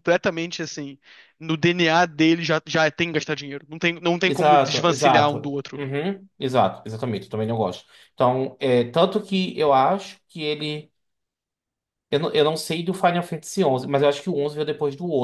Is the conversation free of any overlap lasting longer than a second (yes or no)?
no